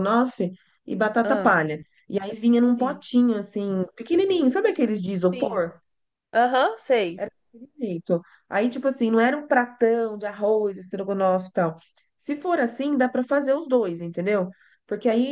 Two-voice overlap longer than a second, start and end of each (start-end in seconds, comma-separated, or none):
4.3-5.6